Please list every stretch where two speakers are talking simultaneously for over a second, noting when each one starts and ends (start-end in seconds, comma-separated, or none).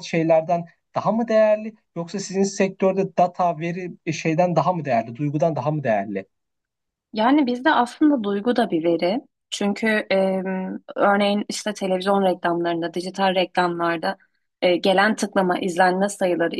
none